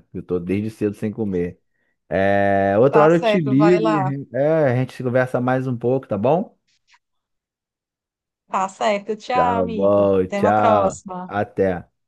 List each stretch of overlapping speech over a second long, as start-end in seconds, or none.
2.9-4.1, 9.3-11.3